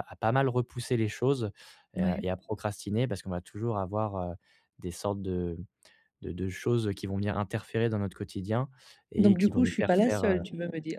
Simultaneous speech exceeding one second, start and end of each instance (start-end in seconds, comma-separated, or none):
9.2-10.4